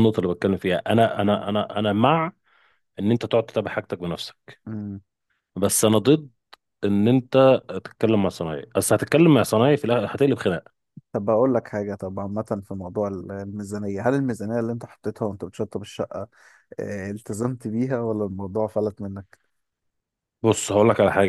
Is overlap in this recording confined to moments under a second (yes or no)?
yes